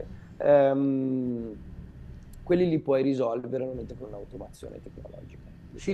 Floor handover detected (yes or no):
yes